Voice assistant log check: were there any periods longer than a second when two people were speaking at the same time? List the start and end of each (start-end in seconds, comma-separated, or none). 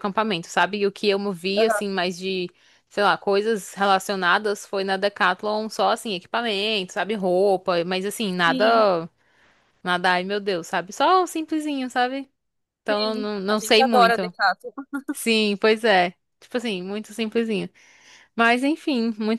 12.9-14.3